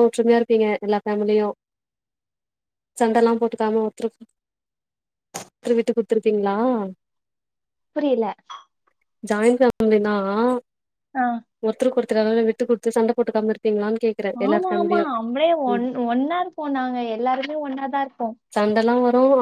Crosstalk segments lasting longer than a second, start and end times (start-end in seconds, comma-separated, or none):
none